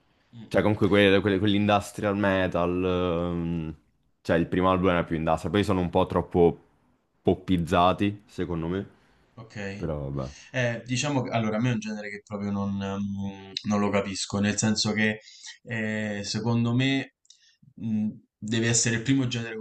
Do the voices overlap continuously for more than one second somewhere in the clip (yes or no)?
no